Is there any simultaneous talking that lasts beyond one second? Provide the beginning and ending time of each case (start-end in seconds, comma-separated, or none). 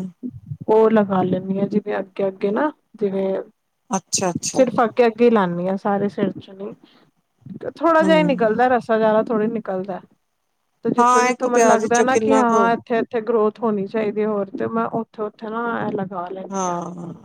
11.0-12.6